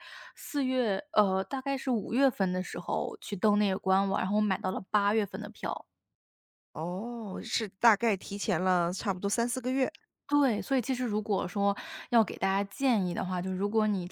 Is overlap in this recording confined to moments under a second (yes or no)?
yes